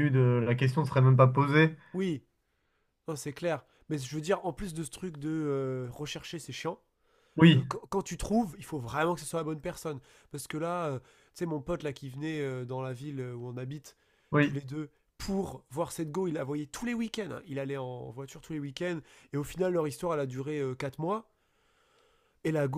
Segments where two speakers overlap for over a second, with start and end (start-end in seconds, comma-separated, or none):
none